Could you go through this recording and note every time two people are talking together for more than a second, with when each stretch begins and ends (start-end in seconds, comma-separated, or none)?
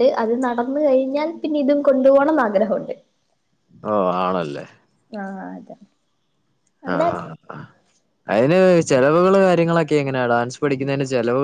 none